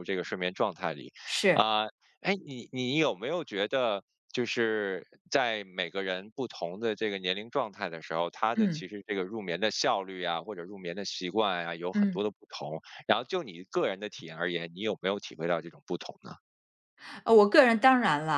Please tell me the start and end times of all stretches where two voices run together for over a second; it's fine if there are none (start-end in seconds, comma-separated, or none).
none